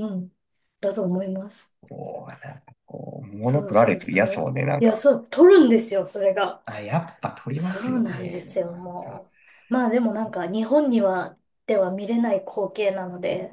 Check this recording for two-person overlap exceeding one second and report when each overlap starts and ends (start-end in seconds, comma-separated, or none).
3.4-5.0, 7.5-9.2